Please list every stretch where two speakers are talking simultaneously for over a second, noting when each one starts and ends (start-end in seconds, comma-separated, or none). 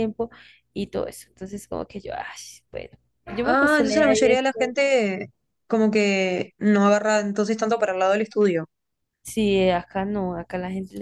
3.4-4.8